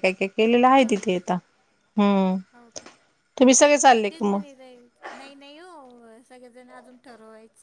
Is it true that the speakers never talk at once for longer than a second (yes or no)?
yes